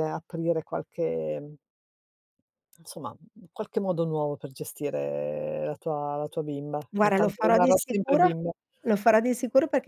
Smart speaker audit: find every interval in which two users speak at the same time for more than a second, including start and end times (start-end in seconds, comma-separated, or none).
6.9-8.3